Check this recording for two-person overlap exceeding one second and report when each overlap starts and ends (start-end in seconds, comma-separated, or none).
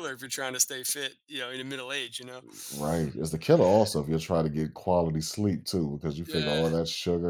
none